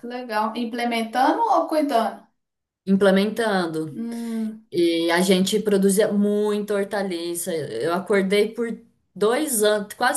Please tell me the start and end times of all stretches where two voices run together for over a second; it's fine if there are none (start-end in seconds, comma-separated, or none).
none